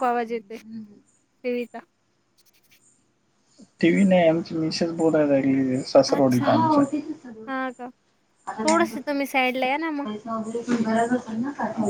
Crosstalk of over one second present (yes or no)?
no